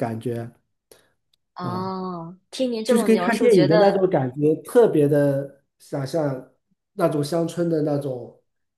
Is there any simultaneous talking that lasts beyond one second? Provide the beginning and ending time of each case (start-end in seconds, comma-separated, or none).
2.9-4.1